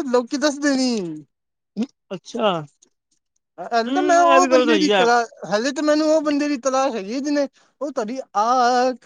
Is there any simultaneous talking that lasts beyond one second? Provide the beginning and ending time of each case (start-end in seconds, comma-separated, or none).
3.7-5.0